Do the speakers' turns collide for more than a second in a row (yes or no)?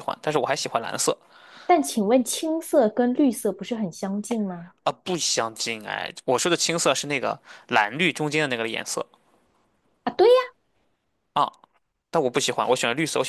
no